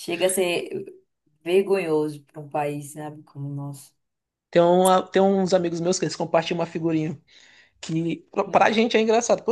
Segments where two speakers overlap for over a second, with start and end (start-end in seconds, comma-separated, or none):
none